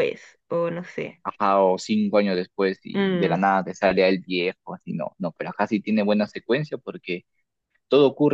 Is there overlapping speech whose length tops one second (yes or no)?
no